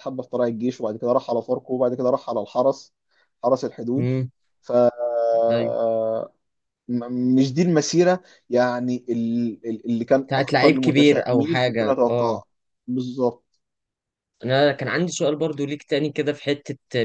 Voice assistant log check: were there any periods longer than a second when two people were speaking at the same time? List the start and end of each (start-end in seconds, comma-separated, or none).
10.3-12.4